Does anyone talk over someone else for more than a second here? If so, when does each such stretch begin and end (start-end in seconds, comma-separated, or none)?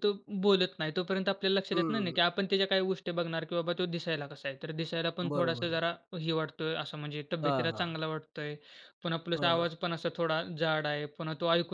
none